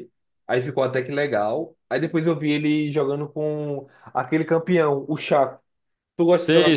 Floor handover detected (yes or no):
yes